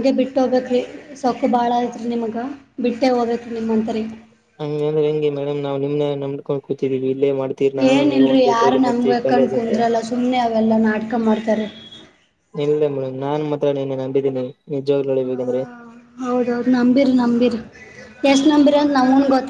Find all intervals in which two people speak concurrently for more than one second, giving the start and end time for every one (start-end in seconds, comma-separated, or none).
7.9-9.7